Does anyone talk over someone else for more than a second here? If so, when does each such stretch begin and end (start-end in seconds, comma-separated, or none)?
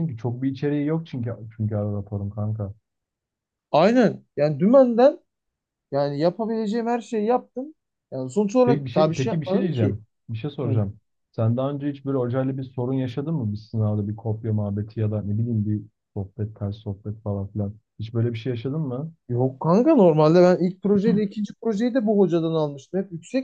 8.6-10.0